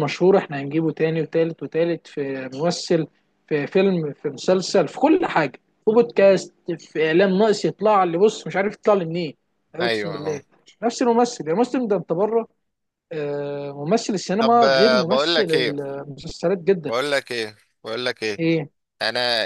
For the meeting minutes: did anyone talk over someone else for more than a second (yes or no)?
yes